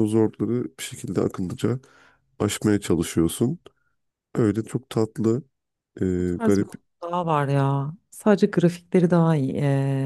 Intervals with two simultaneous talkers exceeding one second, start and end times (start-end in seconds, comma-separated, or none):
none